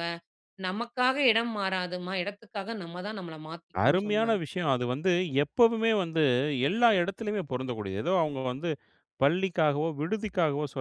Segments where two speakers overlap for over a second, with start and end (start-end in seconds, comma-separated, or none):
none